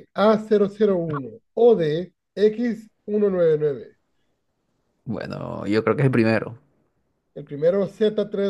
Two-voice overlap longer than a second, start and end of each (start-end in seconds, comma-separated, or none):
none